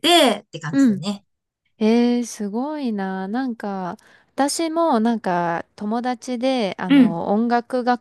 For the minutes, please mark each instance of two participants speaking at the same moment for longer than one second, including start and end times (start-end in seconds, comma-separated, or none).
none